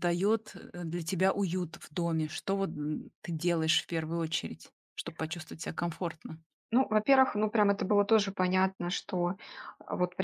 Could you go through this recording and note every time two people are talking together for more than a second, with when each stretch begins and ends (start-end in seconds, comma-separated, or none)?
none